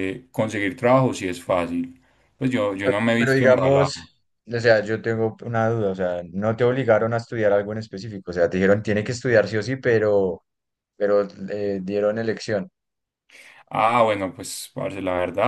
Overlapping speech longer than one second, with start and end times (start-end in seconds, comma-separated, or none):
2.8-4.1